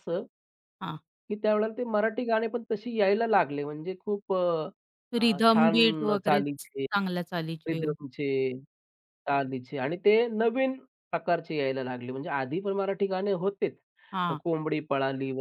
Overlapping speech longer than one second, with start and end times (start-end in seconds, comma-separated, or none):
5.2-6.8